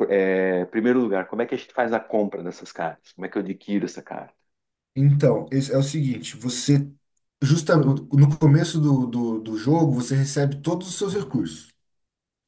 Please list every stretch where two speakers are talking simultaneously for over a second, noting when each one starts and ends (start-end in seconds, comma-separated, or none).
none